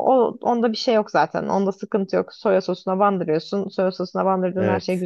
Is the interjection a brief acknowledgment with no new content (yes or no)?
yes